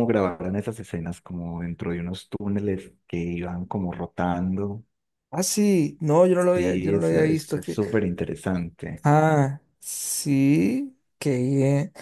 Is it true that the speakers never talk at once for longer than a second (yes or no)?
no